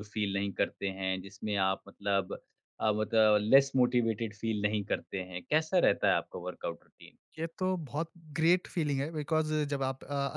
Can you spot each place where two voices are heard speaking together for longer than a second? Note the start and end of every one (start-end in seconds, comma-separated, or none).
none